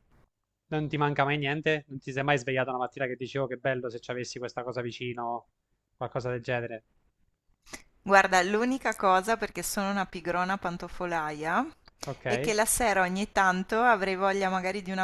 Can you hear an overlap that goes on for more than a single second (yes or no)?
no